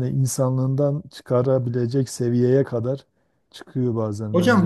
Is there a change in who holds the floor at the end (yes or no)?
yes